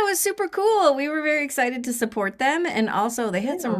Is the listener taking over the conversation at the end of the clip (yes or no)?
no